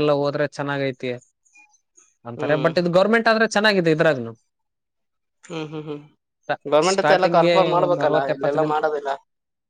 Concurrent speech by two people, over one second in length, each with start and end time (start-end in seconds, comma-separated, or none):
6.9-8.8